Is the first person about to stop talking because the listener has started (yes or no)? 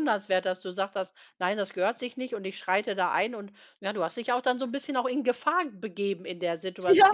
yes